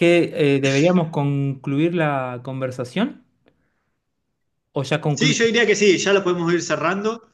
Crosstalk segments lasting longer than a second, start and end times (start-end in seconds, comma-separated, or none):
none